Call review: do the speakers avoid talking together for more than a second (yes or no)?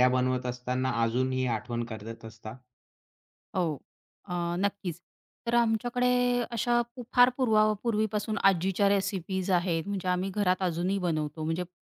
yes